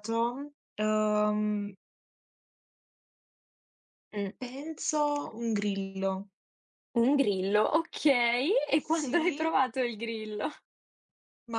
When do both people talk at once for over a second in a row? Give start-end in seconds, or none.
none